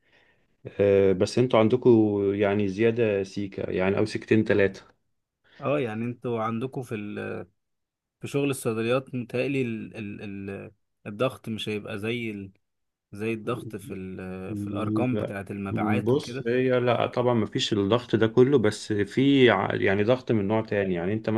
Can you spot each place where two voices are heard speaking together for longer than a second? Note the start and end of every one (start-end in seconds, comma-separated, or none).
none